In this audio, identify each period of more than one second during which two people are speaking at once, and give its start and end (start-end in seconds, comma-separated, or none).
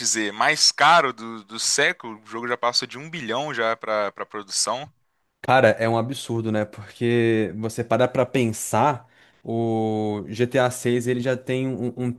none